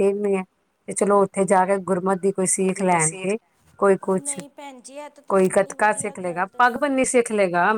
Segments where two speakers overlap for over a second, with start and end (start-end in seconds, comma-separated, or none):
5.3-7.1